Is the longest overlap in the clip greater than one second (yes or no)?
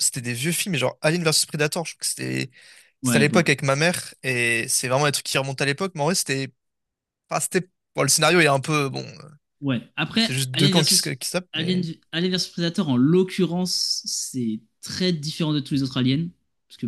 yes